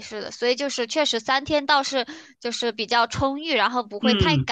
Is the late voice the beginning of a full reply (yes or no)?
yes